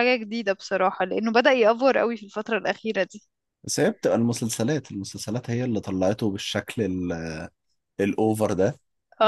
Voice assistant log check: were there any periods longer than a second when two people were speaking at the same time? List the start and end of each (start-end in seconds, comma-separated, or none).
none